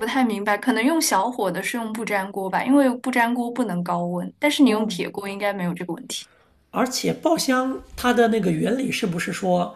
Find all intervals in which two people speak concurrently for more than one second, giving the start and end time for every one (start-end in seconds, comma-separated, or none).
none